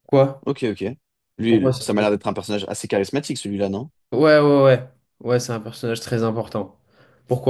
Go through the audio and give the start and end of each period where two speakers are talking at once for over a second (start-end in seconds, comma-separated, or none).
none